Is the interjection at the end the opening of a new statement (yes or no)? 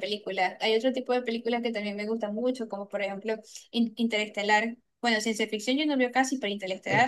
yes